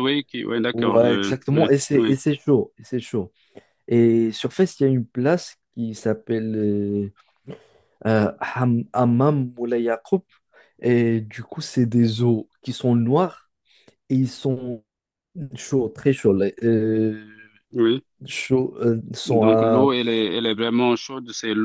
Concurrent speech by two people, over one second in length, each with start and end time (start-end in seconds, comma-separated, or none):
0.7-2.2